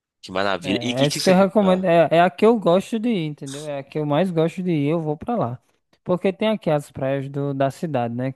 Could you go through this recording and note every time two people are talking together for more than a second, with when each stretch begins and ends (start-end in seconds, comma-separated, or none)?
0.6-1.9